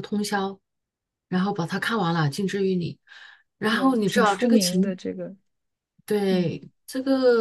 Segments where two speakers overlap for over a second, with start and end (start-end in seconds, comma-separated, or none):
3.7-5.0